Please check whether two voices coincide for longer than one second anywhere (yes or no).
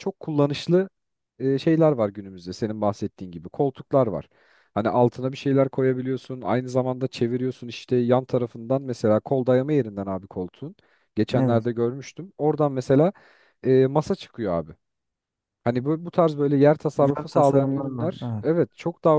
yes